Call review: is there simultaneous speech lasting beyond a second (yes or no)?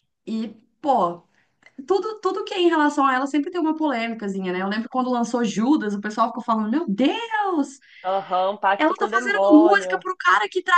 yes